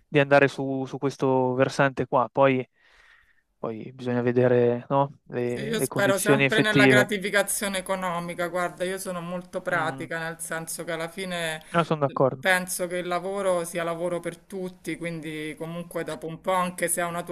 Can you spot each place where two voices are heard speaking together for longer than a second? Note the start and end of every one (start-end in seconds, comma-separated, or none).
5.4-7.1